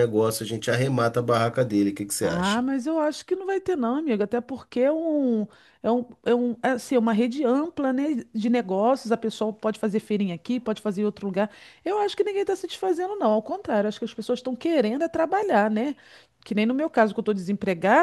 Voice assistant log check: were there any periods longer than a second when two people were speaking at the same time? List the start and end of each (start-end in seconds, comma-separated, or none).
none